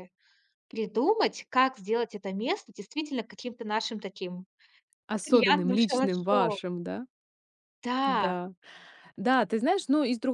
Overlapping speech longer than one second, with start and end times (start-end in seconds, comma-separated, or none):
5.2-6.6